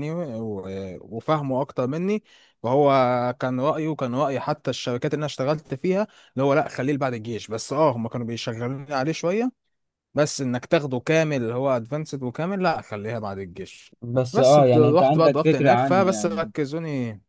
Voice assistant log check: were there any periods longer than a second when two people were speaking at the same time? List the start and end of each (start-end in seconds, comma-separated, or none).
14.3-16.5